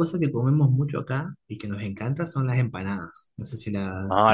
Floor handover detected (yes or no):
yes